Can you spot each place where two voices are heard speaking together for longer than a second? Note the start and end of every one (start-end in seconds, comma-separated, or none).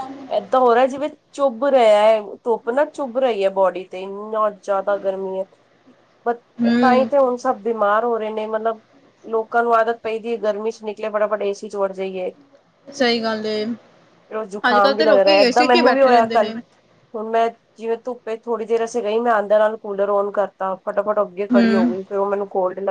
14.7-16.5